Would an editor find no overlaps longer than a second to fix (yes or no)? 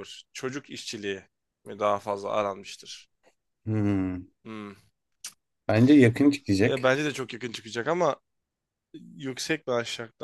yes